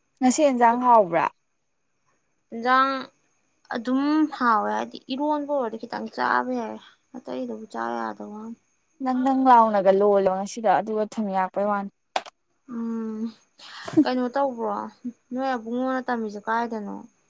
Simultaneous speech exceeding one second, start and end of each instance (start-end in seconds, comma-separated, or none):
none